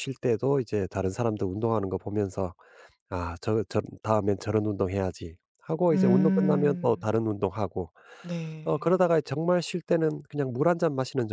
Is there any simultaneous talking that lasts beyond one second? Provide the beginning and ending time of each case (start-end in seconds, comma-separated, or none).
5.9-7.2